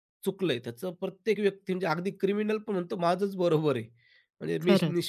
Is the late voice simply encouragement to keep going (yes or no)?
yes